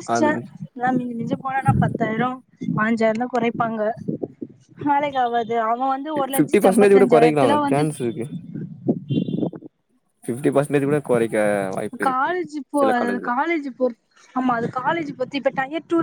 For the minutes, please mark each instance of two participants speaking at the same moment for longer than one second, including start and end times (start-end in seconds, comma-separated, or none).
6.3-7.8